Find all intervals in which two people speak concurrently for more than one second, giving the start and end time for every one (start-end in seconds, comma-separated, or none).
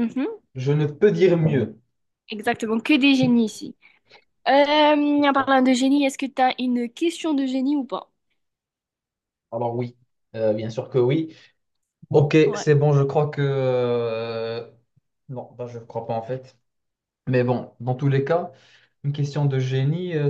none